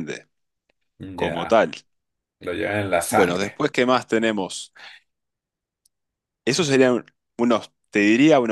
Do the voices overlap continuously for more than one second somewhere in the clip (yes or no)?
no